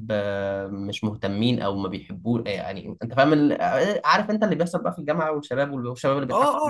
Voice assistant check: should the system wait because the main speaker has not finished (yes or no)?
no